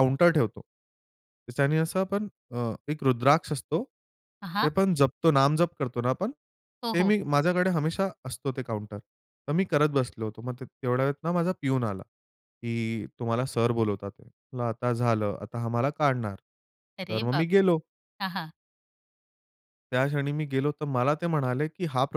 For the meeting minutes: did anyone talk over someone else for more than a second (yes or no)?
no